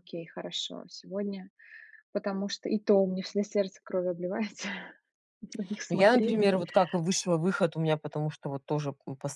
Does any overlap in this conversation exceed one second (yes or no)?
no